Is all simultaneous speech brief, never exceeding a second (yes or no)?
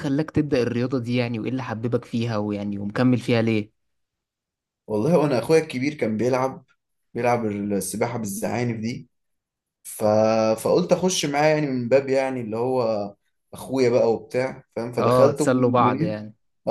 no